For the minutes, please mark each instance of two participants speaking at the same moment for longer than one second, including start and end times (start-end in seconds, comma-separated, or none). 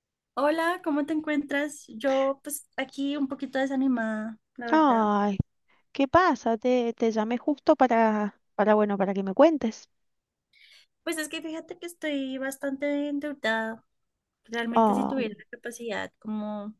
none